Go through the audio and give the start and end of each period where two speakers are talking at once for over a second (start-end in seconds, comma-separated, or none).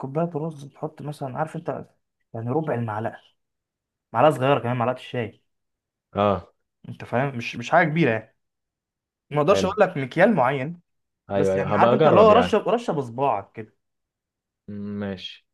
11.3-12.6